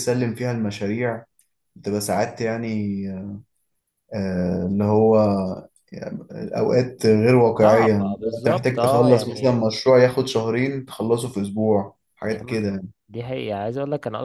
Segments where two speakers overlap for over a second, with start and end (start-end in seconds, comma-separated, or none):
7.6-9.6